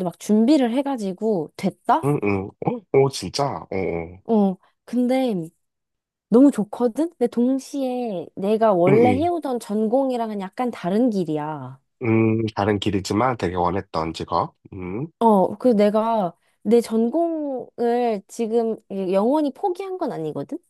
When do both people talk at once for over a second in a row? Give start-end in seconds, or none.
none